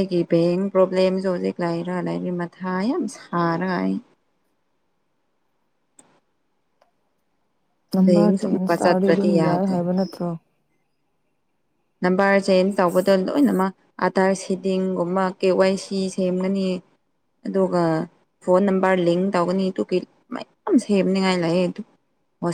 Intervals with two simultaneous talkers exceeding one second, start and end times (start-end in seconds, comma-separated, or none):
8.1-9.7